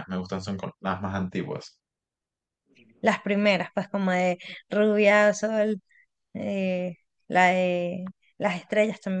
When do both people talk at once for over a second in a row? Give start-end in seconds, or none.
none